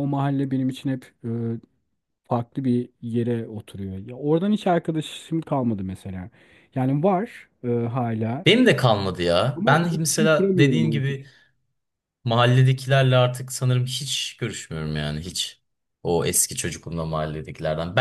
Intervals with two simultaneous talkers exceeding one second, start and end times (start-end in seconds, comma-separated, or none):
9.6-11.2